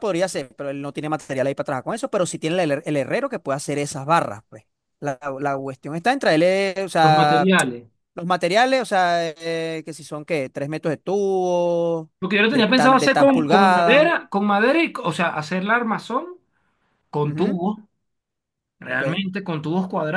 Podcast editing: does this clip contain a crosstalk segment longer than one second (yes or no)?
yes